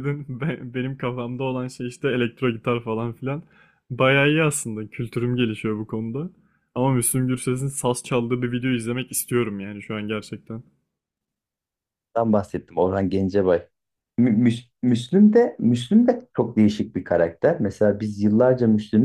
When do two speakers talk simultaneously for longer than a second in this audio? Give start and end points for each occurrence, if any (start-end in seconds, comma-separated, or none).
none